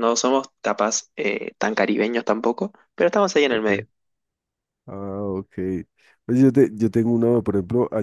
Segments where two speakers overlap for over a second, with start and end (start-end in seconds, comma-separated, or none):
none